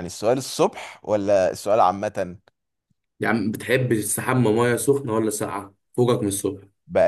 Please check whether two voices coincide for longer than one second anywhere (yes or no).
no